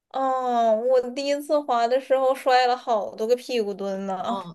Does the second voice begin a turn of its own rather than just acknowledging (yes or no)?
yes